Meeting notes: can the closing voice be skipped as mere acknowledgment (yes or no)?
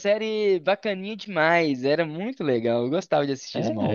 no